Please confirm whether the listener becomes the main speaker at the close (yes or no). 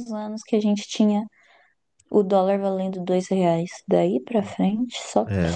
yes